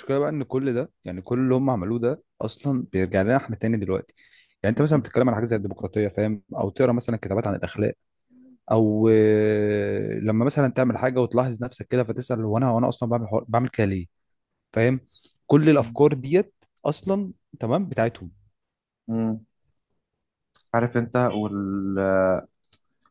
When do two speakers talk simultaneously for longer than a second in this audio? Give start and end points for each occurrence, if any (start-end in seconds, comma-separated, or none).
none